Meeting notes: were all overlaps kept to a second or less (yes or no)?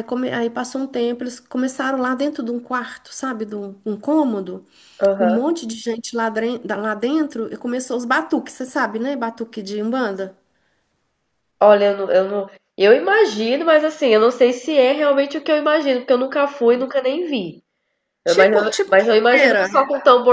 no